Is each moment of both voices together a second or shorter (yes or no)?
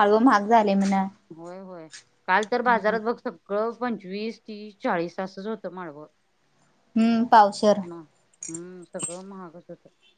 yes